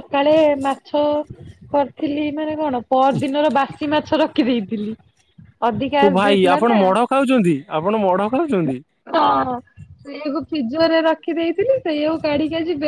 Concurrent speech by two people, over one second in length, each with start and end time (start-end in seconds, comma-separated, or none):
none